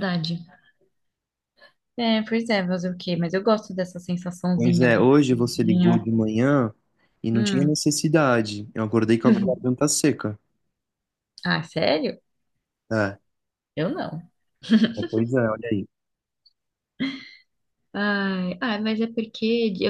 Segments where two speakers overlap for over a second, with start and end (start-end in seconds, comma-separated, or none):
4.5-6.1